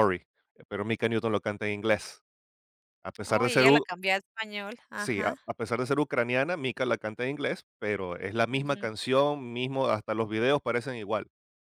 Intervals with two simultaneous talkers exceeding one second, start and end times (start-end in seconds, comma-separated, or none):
none